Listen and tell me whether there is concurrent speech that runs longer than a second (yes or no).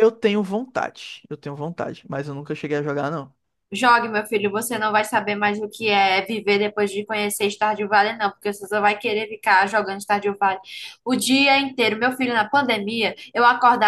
no